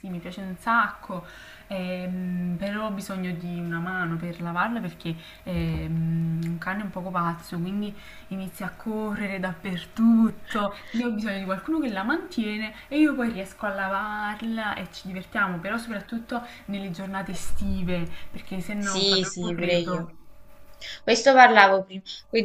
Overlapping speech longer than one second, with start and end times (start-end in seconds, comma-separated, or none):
18.8-20.1